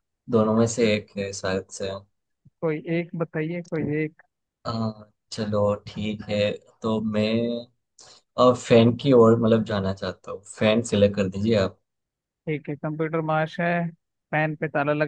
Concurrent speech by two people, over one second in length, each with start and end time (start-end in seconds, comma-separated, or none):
none